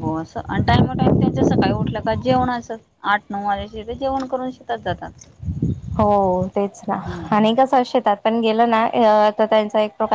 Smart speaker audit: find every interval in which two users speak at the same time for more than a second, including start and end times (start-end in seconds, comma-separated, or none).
none